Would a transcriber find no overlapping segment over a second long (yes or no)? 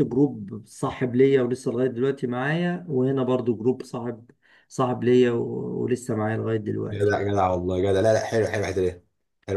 yes